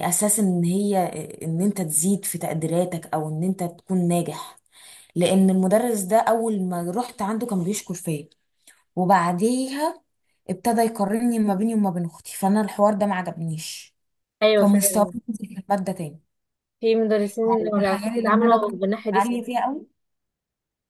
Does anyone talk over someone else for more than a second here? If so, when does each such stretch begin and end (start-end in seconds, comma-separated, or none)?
17.8-19.3